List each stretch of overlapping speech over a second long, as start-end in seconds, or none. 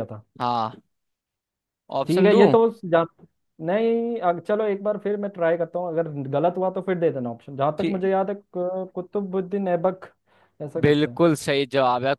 none